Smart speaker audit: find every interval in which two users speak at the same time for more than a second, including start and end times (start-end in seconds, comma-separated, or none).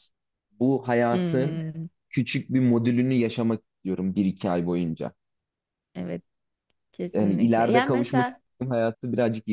7.1-8.4